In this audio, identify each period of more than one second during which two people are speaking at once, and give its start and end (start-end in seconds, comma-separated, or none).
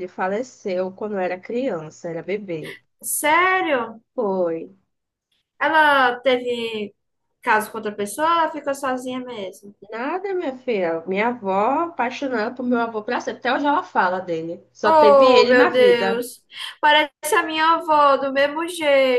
14.8-16.2